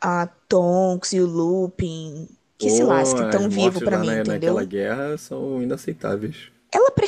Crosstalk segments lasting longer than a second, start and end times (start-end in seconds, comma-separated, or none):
2.6-4.7